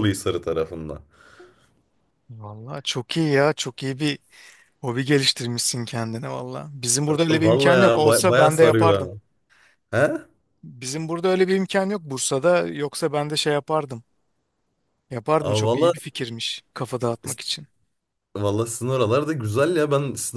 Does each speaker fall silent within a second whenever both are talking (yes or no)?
no